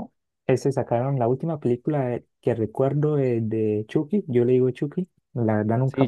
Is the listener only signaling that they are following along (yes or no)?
yes